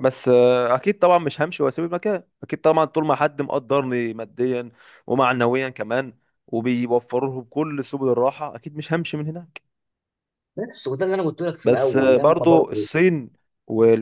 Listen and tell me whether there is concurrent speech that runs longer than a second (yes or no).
yes